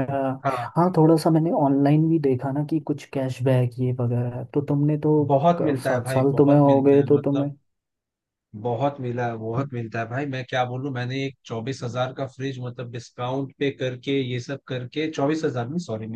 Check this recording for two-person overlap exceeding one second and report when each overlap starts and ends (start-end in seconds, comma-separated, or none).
5.6-7.5